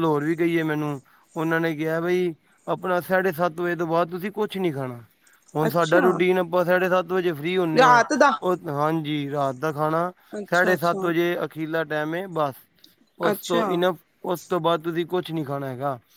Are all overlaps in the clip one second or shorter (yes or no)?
yes